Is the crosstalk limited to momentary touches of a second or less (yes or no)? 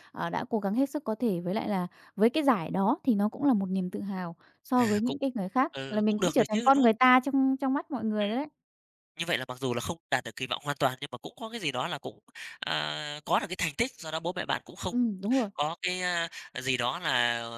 no